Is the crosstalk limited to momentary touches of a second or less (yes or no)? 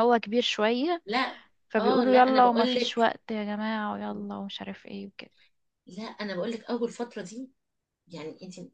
no